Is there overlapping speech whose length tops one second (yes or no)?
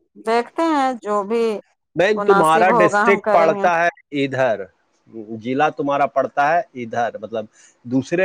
yes